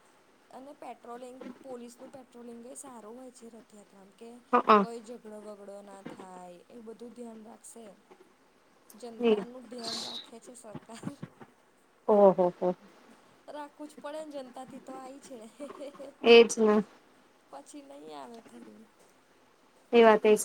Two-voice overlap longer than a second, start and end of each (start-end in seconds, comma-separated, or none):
none